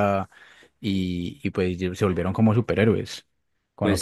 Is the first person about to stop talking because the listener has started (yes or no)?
yes